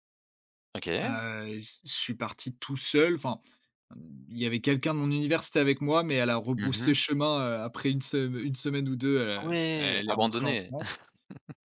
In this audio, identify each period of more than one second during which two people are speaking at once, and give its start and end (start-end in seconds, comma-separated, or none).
9.4-10.7